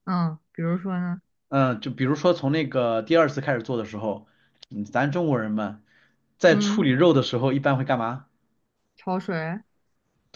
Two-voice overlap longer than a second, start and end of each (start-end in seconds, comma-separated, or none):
none